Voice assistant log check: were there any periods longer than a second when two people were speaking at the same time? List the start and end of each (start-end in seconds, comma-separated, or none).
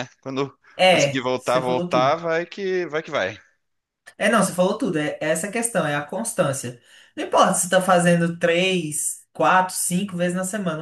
0.8-2.1